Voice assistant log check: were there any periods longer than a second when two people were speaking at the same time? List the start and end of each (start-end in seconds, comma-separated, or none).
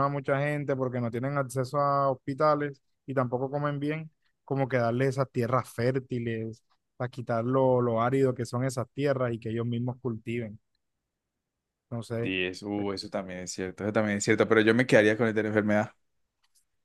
none